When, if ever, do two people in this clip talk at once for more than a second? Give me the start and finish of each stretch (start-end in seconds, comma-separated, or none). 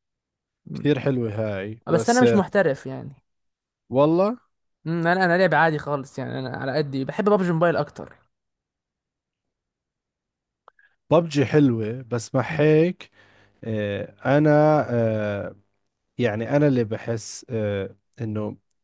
none